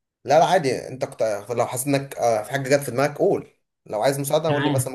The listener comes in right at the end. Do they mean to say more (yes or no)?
yes